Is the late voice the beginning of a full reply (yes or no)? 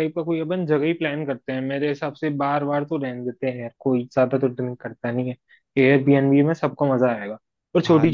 no